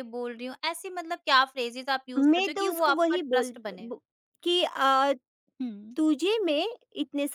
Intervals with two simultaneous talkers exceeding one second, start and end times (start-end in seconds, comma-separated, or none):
2.2-3.9